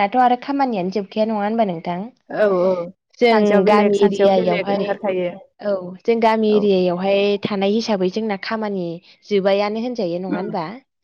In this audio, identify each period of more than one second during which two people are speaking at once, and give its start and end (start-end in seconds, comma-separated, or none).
3.3-4.9